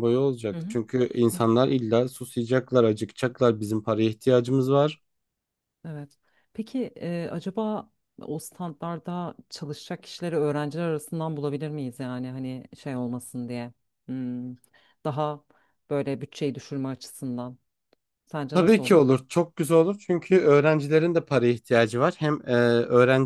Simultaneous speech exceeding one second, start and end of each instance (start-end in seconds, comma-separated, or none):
none